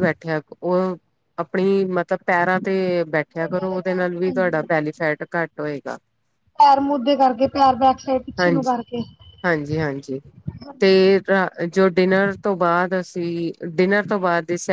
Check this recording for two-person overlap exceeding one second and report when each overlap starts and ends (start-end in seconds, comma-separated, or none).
3.3-4.7